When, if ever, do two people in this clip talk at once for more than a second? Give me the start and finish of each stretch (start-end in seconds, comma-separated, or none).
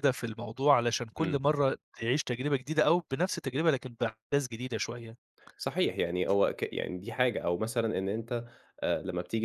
none